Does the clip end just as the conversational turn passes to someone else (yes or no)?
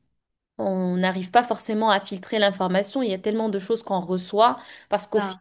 no